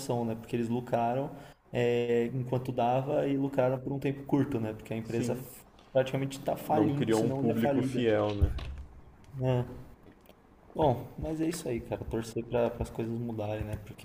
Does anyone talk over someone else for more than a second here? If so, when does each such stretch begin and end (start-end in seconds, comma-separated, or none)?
6.7-8.0